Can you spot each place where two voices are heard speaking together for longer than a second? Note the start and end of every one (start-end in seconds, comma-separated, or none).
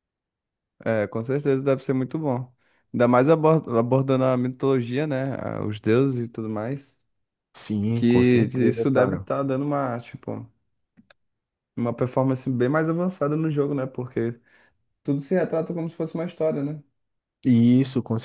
7.9-9.3